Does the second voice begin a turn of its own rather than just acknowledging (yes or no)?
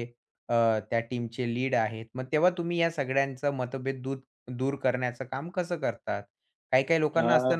no